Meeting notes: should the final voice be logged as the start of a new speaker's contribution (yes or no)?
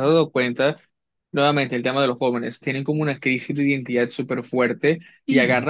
no